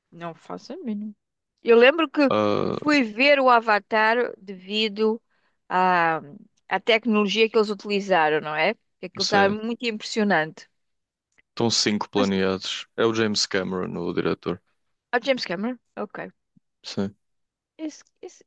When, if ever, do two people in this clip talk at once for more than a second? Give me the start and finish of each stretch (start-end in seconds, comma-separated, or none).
none